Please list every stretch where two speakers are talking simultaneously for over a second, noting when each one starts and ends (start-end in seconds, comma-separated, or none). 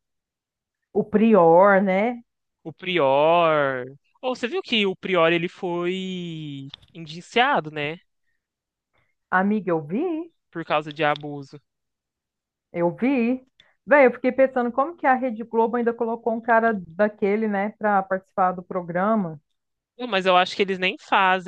none